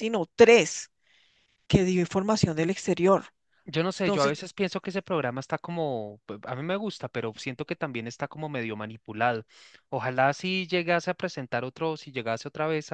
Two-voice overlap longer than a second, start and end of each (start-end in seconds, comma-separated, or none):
none